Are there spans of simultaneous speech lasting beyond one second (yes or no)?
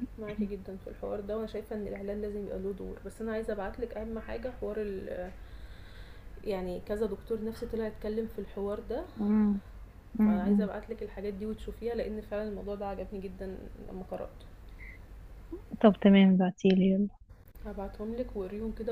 no